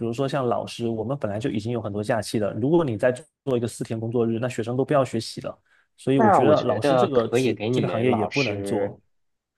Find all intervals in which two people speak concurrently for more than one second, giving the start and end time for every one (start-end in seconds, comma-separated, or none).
6.1-8.9